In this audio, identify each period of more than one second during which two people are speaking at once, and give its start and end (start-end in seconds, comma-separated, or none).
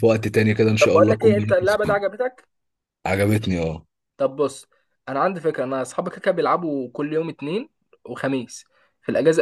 0.8-2.0